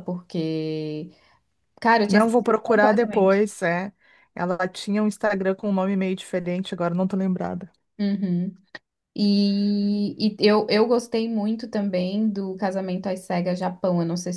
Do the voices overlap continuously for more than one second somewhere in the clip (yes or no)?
yes